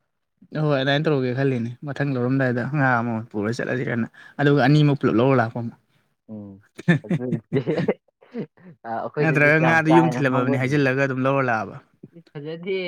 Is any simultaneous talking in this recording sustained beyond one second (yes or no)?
yes